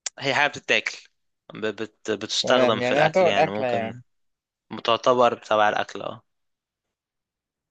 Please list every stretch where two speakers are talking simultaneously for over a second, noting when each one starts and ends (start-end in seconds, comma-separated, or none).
2.4-3.9